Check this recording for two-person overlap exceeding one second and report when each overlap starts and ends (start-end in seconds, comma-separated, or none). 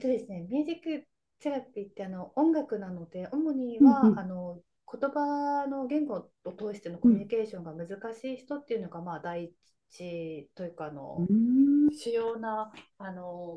none